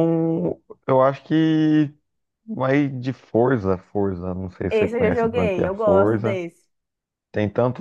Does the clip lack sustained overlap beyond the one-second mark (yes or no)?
no